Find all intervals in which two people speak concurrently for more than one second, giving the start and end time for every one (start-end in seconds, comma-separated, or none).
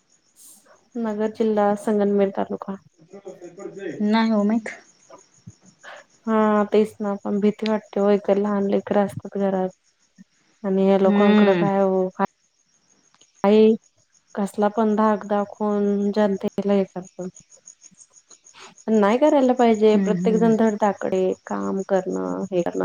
none